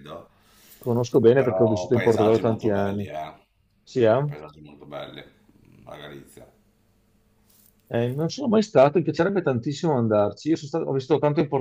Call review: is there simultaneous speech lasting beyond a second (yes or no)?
yes